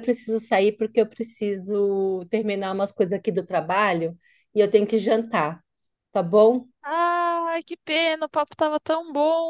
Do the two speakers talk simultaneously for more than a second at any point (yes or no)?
no